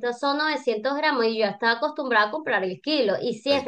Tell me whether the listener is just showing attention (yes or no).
yes